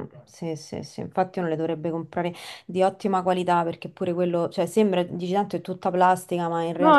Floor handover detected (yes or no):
yes